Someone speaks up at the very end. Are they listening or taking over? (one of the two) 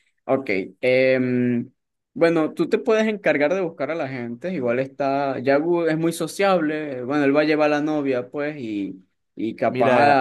taking over